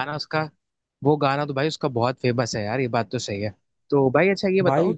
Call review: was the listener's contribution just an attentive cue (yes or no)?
yes